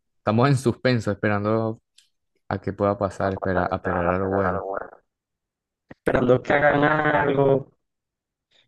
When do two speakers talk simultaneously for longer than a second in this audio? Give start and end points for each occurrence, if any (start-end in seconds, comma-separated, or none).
3.2-4.6